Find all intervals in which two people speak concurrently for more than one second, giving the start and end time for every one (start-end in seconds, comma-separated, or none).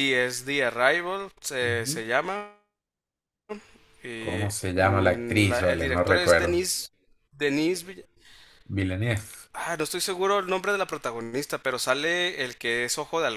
4.1-6.7